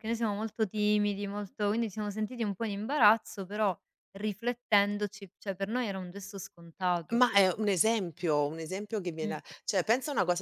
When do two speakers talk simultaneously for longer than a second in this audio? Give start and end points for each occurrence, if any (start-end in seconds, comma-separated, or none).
none